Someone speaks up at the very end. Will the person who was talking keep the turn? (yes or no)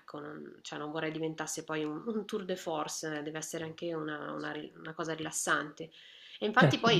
yes